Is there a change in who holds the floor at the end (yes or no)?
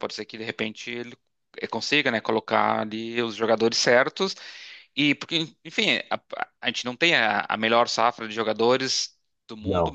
no